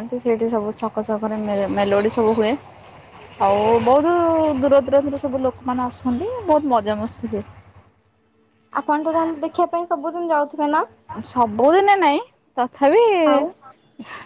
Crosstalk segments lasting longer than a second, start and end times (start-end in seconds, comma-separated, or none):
none